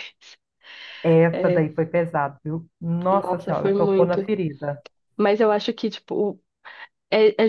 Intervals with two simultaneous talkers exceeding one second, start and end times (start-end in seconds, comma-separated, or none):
3.1-4.3